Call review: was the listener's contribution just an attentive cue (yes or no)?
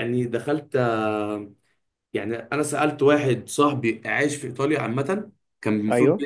yes